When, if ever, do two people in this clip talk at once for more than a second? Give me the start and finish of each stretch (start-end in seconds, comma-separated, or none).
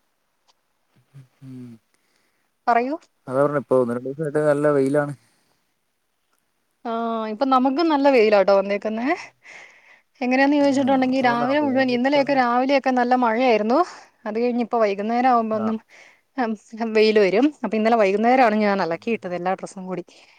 10.7-12.4